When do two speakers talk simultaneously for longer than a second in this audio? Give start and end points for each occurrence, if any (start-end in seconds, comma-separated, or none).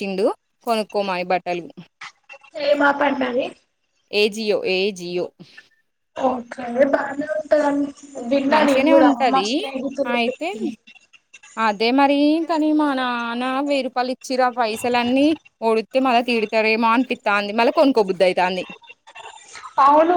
none